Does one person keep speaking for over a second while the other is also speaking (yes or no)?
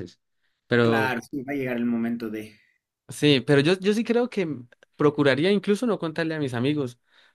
no